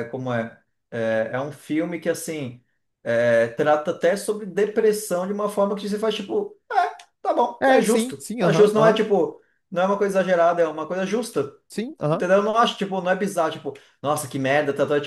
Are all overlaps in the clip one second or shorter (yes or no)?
no